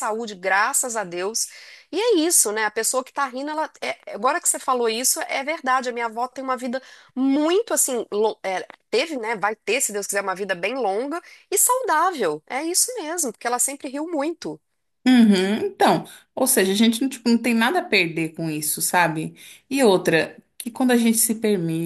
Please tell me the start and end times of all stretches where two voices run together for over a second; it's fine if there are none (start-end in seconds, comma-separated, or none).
none